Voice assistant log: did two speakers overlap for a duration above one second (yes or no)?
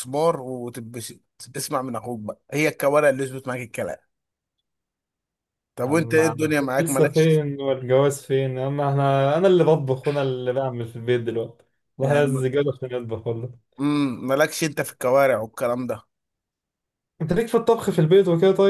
yes